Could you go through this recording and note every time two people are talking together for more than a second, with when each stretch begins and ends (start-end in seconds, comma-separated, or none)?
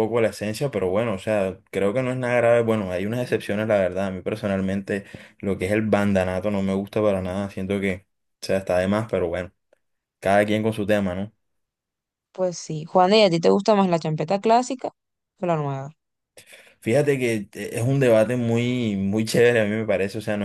none